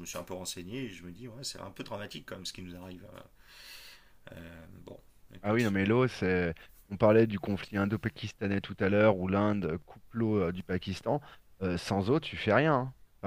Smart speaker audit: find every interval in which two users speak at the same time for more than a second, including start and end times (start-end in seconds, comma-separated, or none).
none